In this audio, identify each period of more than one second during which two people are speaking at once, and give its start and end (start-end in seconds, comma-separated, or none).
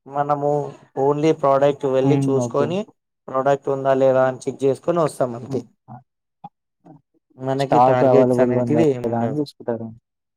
7.6-9.4